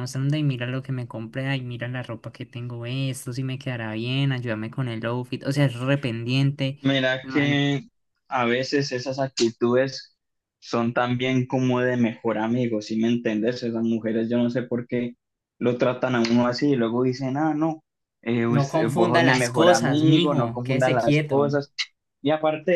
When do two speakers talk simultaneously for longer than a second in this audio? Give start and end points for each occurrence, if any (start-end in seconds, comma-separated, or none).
18.5-21.5